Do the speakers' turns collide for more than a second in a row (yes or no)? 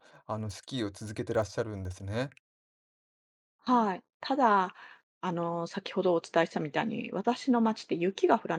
no